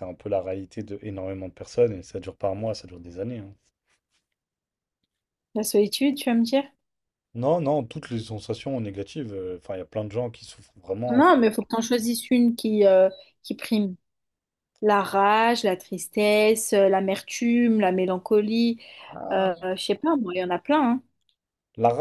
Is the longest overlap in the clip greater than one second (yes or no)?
no